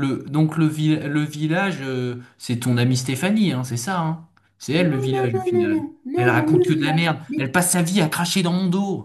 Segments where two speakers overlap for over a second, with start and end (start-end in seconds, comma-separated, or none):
4.8-7.4